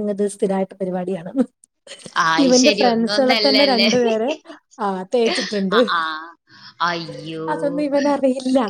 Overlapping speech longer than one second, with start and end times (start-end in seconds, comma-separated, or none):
2.5-3.9